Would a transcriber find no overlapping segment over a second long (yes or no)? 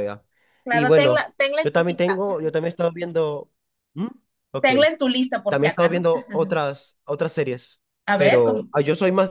no